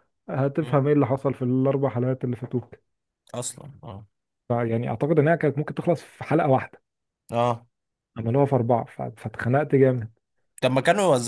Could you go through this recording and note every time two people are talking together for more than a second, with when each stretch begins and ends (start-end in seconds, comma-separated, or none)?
none